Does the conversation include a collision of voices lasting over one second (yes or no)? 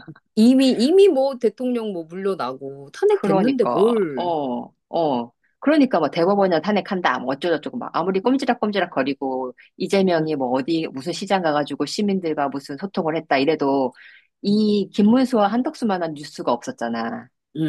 yes